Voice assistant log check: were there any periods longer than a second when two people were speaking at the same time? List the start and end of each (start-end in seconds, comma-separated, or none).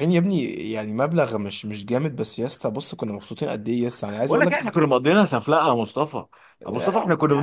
none